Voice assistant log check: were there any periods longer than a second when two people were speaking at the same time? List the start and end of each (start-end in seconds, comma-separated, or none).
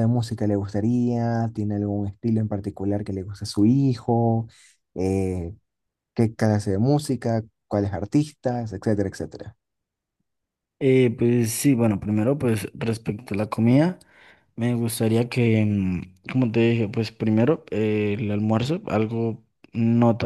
none